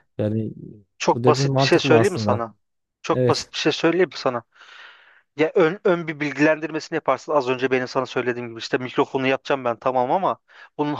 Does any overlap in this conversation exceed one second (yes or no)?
yes